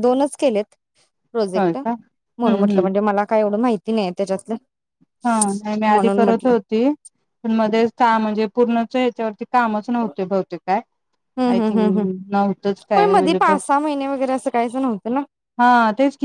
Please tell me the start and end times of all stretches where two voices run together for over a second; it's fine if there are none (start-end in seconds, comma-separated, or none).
1.6-2.9